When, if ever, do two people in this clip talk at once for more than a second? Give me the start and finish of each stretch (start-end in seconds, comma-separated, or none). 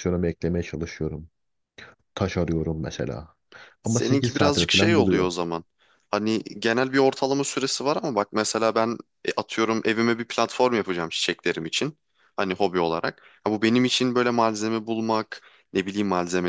3.8-5.3